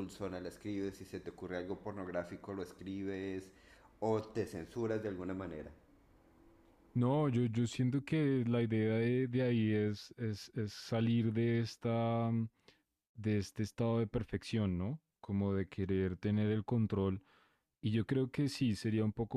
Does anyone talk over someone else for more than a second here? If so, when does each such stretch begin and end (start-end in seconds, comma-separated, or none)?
none